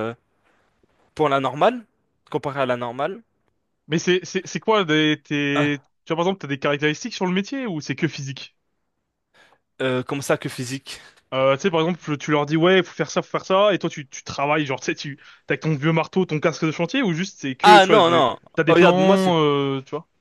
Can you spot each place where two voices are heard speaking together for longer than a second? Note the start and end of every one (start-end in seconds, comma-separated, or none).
17.6-19.3